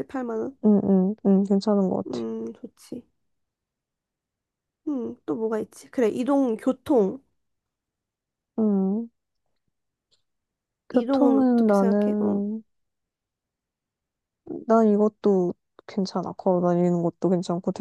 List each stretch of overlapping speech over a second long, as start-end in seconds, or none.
10.9-12.4